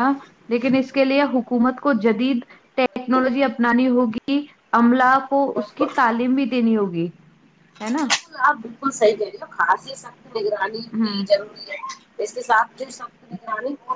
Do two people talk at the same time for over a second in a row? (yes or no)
no